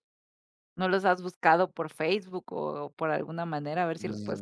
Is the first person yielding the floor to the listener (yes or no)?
yes